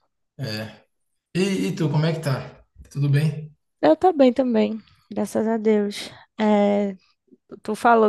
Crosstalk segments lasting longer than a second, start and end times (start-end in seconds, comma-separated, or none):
none